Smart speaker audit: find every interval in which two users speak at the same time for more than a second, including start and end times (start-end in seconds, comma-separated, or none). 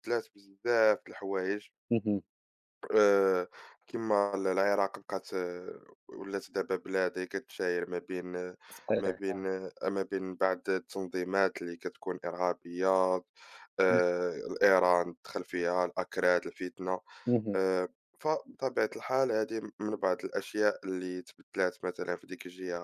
none